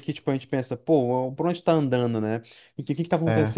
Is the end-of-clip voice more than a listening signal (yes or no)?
no